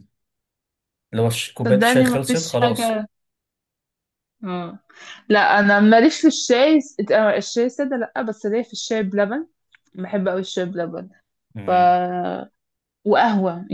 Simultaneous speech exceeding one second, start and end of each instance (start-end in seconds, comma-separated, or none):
1.7-3.0